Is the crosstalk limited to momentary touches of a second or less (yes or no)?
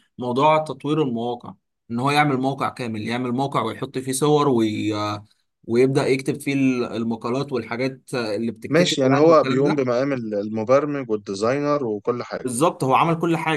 no